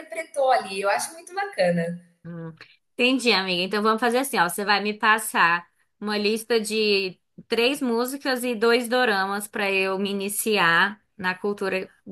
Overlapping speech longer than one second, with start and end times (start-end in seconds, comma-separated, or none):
none